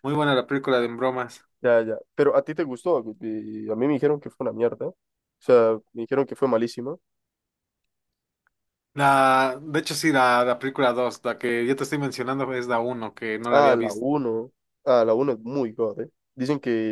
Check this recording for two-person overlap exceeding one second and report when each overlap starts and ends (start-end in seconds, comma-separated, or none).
none